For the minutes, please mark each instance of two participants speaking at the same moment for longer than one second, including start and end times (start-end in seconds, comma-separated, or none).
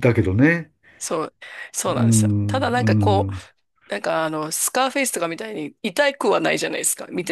1.9-3.3